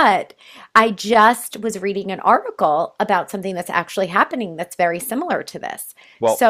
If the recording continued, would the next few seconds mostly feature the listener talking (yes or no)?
no